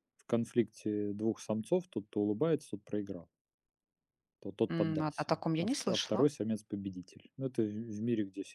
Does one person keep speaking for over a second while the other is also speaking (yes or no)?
yes